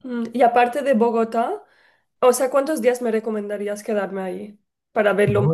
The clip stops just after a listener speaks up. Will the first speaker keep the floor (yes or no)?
no